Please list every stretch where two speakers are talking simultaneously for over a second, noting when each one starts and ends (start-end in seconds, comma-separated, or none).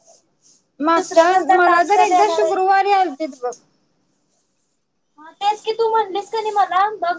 0.9-2.6